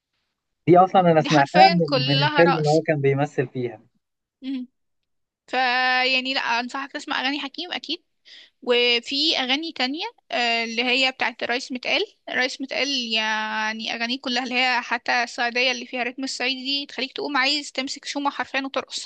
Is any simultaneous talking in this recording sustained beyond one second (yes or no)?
yes